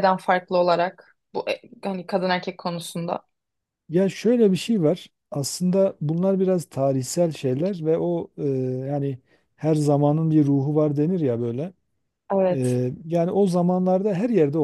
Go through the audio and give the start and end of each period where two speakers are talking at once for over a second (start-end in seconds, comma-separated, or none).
none